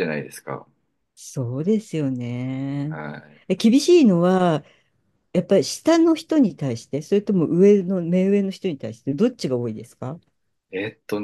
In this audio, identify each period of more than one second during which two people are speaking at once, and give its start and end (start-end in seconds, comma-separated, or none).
none